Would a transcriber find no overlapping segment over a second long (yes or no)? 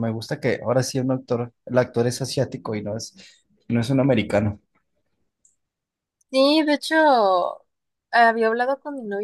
yes